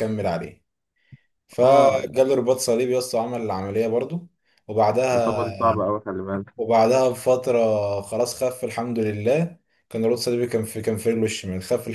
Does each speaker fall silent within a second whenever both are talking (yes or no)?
yes